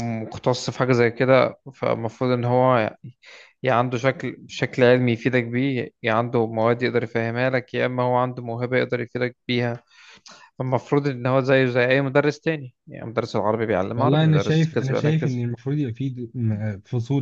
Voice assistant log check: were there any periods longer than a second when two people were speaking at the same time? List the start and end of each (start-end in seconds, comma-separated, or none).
13.9-15.4